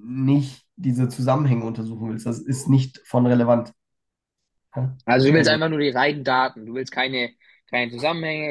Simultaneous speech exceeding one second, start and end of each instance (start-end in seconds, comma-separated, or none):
none